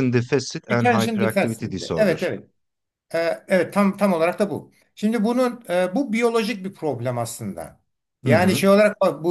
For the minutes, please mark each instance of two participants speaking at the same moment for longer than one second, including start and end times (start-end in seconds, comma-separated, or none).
0.7-2.2